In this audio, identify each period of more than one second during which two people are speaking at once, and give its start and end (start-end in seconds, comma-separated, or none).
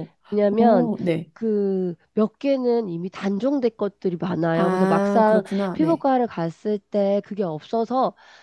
4.5-6.1